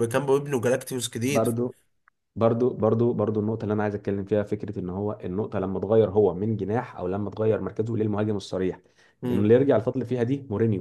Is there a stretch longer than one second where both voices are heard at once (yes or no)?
no